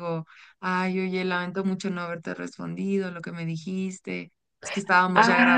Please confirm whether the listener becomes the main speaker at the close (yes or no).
yes